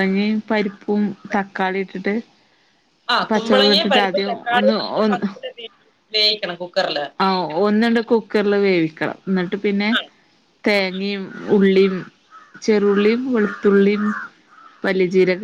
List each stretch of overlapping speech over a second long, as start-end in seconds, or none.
3.3-5.3